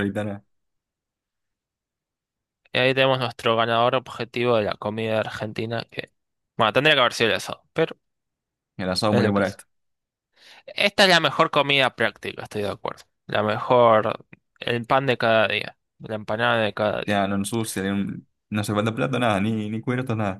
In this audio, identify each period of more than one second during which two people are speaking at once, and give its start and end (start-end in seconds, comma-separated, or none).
none